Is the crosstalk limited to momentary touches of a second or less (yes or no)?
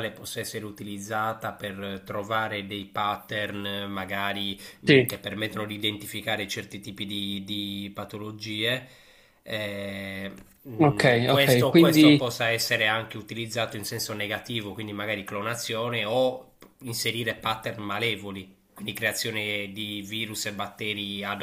no